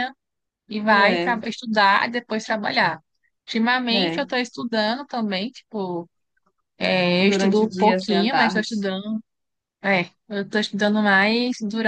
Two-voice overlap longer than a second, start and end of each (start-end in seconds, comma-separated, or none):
7.2-8.7